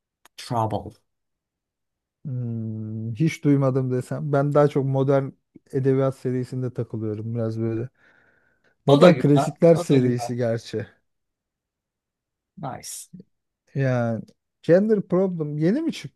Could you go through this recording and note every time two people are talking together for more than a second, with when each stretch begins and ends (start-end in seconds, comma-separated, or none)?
8.9-10.3